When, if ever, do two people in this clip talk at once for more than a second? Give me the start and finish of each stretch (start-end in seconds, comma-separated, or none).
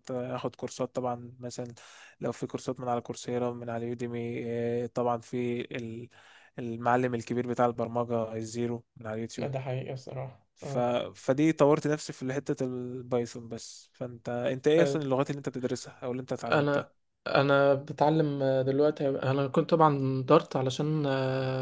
none